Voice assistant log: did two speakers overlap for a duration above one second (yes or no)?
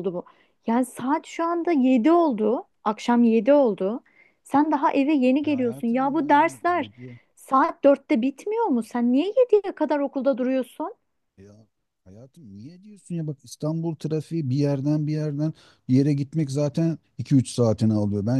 yes